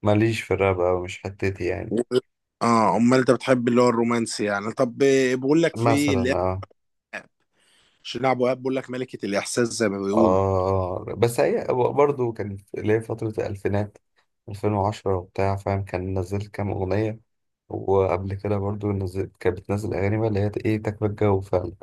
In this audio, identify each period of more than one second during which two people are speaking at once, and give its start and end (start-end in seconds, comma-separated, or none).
none